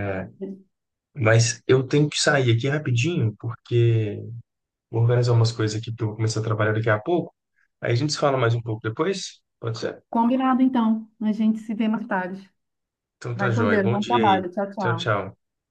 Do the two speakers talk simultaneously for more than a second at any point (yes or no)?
yes